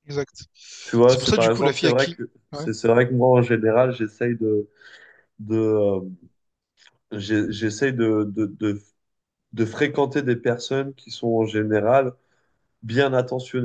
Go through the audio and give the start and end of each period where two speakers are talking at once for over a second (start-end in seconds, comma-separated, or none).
1.1-2.7